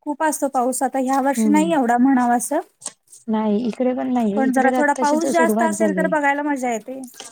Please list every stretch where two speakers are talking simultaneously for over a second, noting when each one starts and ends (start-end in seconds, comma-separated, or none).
4.5-6.1